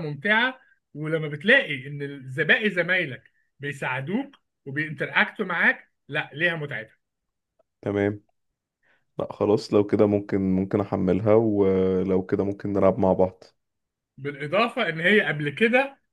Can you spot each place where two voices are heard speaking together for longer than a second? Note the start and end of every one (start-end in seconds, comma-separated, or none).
none